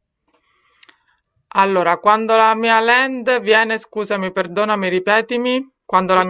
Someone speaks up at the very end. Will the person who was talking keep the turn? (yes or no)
no